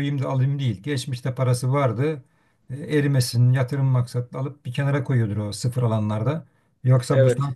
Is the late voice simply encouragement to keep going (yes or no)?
yes